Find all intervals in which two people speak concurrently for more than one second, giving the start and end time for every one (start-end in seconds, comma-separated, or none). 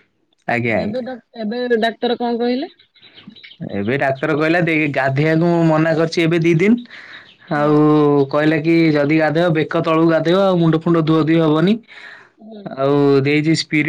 none